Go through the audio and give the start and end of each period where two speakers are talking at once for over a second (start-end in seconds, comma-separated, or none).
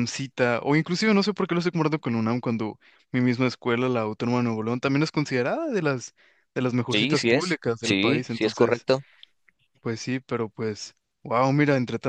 6.9-8.9